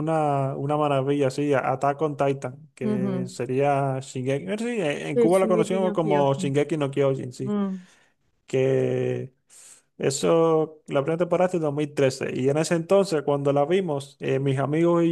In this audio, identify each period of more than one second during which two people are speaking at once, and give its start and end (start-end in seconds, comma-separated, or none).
5.1-6.5